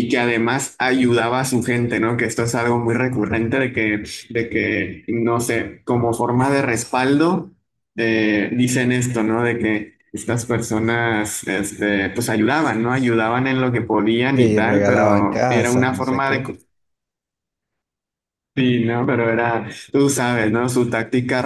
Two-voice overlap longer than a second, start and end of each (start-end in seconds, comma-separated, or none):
14.3-16.4